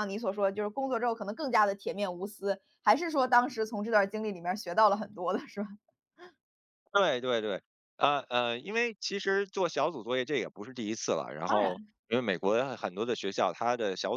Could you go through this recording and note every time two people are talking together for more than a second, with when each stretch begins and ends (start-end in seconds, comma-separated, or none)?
none